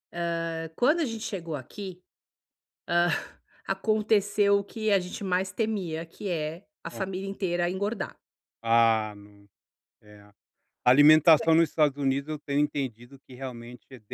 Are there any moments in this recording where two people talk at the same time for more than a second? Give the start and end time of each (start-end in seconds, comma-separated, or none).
none